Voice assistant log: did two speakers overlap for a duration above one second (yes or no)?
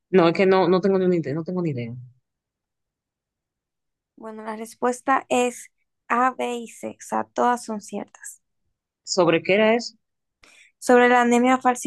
no